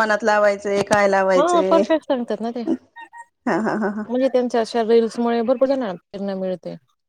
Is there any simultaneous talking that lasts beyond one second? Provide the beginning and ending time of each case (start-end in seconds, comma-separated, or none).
1.4-2.6